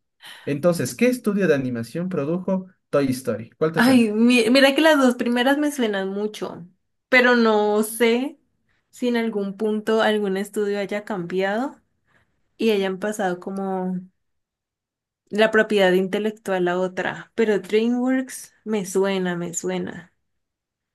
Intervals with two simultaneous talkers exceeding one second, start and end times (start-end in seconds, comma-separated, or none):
none